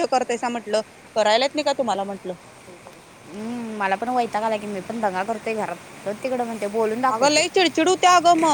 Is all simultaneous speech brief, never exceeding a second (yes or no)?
yes